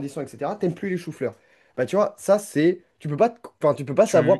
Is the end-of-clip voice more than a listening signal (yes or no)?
no